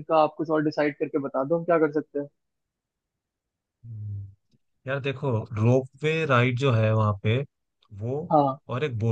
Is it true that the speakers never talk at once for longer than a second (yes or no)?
yes